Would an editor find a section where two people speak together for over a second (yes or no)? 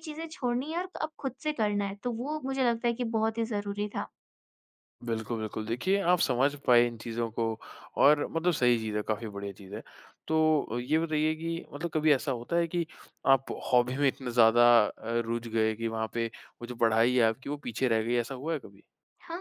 no